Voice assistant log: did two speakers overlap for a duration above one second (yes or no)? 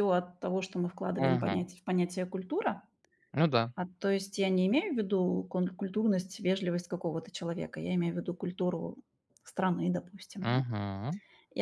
no